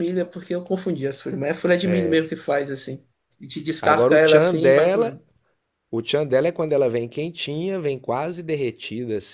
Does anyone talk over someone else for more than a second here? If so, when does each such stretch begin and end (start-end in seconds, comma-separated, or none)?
3.8-5.2